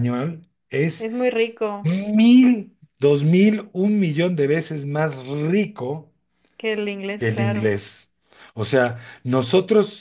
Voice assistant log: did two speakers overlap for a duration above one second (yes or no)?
no